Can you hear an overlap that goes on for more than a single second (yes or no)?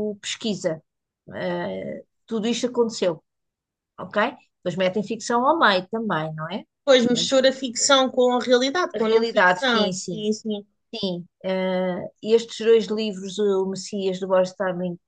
yes